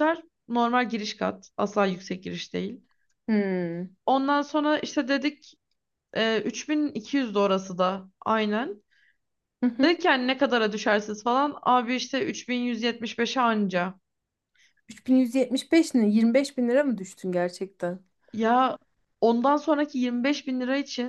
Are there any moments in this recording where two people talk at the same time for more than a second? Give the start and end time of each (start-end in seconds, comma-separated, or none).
none